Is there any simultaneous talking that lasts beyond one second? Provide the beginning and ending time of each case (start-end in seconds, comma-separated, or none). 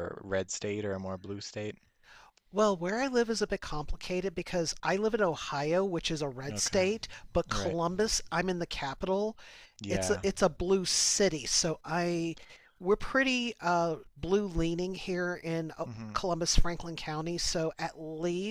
none